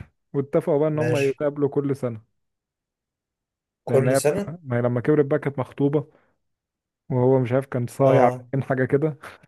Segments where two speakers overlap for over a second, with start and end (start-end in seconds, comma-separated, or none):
none